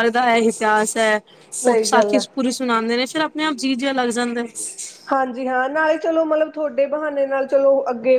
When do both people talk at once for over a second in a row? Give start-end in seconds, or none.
none